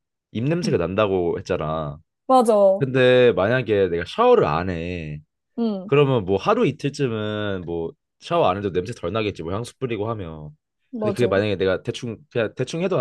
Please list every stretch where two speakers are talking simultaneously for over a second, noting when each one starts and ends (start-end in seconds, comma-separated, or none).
none